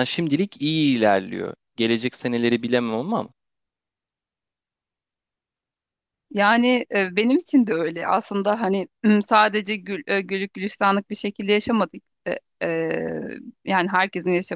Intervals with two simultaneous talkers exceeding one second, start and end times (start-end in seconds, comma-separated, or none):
none